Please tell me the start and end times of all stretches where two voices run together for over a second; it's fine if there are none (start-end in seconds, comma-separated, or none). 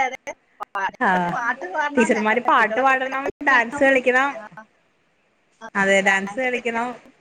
1.9-3.9